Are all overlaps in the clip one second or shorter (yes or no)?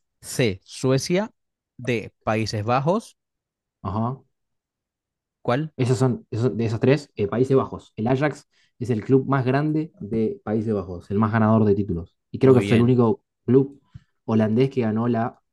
yes